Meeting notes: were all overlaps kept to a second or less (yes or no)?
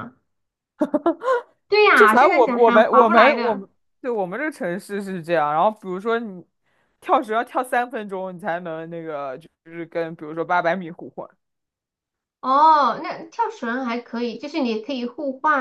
no